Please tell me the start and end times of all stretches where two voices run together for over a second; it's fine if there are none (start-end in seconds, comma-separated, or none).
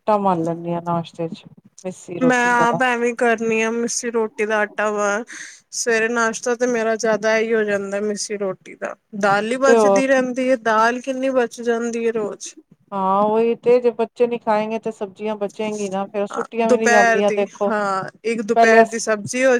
none